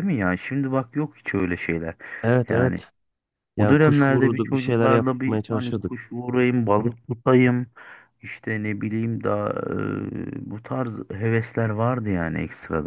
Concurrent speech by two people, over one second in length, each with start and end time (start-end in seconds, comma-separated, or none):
3.6-5.9